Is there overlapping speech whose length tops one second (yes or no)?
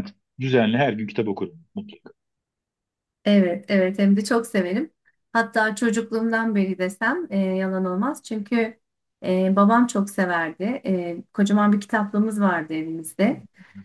no